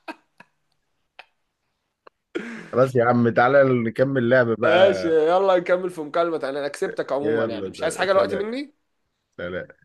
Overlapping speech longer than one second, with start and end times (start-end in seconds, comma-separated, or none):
7.2-8.4